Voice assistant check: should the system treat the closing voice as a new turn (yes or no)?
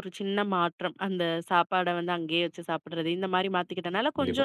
no